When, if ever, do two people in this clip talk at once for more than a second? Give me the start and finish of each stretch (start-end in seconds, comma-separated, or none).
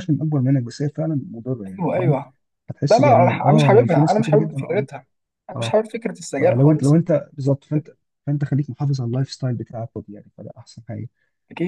2.9-4.9